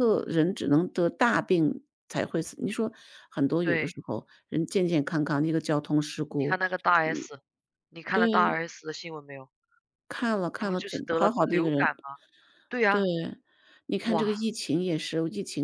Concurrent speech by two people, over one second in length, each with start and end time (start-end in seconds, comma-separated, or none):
10.6-11.9